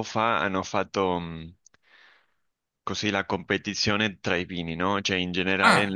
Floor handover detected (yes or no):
no